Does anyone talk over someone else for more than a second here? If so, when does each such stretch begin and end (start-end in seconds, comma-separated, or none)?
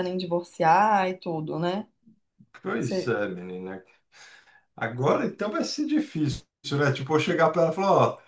none